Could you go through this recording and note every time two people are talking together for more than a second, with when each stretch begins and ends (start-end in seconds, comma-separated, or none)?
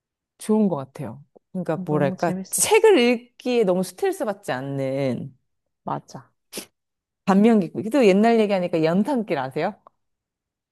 1.7-2.9